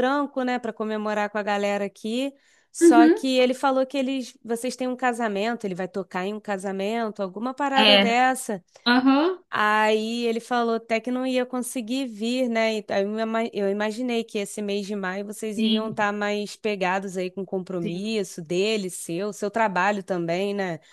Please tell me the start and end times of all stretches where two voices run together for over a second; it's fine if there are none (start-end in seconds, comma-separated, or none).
none